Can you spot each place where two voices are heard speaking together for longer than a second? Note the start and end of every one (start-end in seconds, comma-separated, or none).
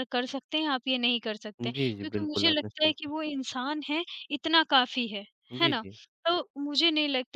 1.6-3.2